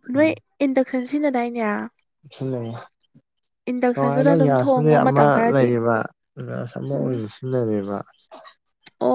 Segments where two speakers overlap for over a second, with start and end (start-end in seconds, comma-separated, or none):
3.9-5.7